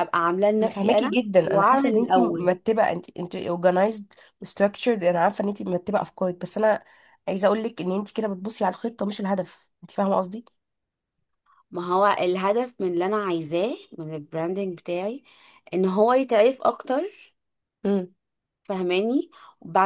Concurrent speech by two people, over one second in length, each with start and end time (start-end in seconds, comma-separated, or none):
0.6-2.6